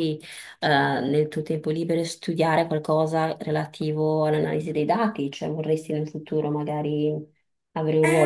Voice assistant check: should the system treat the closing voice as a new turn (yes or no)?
yes